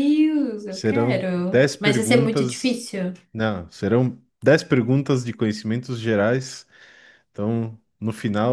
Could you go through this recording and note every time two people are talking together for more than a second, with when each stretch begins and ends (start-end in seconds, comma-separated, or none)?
0.7-2.8